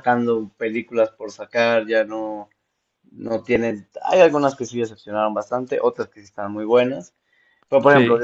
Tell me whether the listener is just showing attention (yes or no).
yes